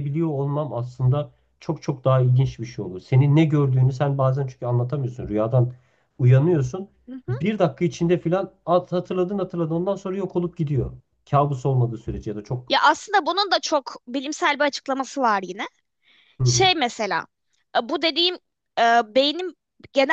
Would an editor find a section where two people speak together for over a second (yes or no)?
no